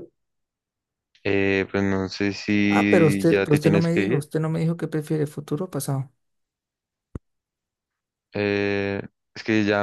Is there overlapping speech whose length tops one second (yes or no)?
yes